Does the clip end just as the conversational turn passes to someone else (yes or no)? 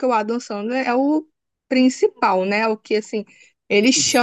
yes